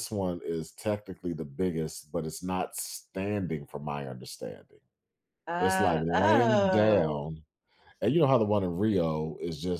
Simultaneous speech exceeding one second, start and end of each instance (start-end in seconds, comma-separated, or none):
5.6-7.2